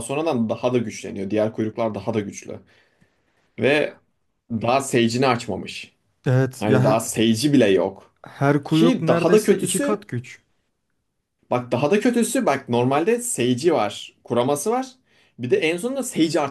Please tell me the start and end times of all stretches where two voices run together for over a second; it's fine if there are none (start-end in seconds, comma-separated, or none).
8.7-10.0